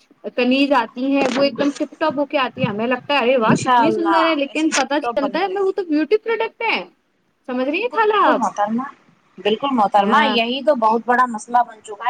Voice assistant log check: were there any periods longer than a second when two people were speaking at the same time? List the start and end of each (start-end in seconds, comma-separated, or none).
3.5-5.7